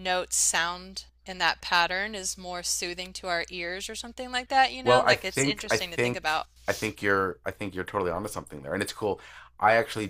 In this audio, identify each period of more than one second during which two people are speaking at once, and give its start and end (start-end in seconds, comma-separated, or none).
4.8-6.5